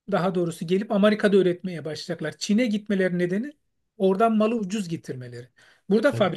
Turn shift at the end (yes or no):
no